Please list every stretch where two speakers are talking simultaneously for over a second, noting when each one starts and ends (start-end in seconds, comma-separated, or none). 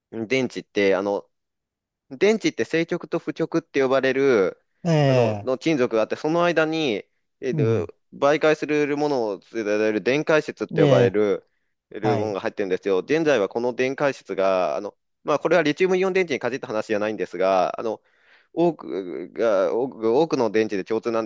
none